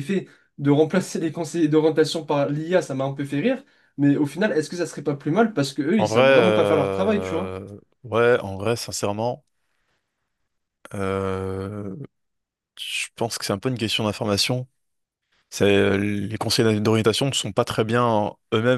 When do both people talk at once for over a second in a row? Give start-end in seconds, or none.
6.0-7.5